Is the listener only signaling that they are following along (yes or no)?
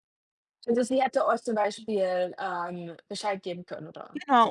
no